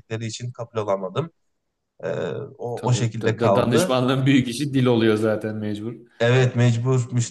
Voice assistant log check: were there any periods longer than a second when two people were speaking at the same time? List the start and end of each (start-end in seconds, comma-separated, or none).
2.8-4.0